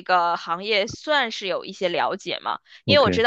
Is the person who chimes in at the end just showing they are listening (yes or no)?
yes